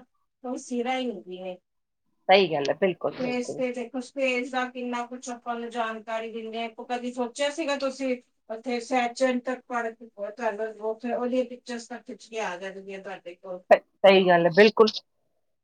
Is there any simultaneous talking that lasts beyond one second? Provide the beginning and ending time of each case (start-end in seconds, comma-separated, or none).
none